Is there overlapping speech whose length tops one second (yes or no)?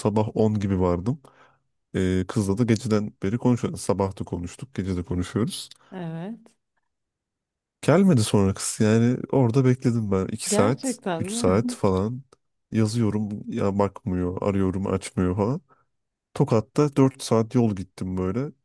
yes